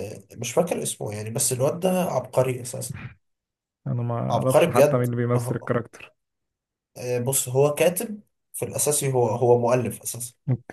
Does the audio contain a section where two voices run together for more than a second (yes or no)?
yes